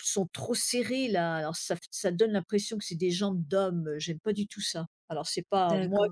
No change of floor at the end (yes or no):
no